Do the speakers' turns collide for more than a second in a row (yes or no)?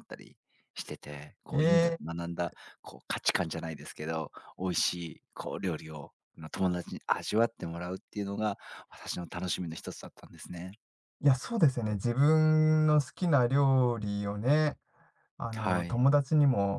no